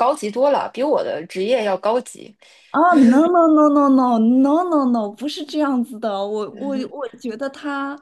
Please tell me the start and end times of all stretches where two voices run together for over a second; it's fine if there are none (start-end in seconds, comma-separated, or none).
none